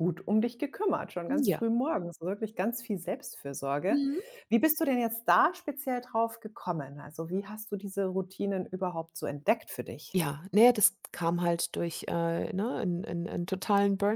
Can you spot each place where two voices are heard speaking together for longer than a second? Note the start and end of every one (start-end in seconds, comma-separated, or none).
none